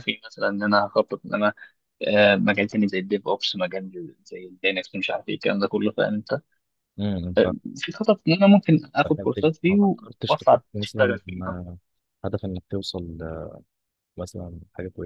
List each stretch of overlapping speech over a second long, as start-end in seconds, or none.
9.0-11.4